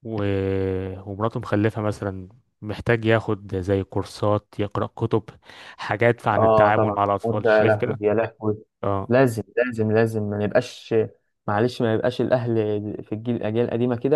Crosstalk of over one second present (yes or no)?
yes